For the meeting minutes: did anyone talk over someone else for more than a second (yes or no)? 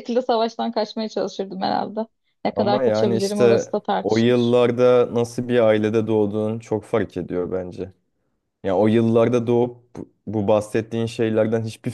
yes